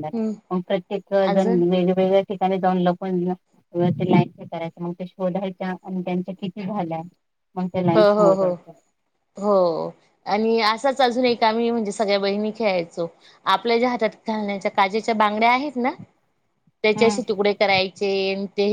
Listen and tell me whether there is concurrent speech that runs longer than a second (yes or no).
no